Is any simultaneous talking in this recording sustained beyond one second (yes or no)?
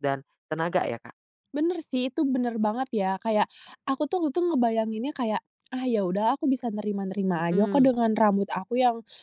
no